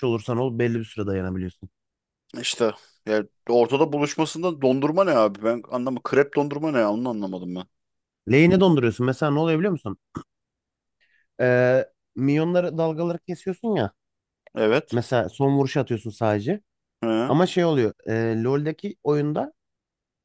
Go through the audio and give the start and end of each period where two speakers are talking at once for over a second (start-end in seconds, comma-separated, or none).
none